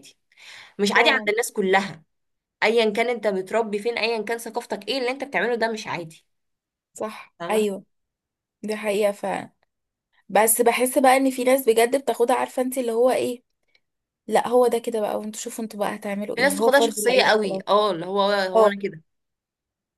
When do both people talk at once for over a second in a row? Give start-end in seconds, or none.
16.4-17.6